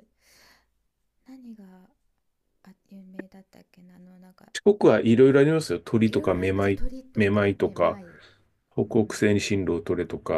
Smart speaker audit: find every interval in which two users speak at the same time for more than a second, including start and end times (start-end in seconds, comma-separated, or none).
6.1-8.0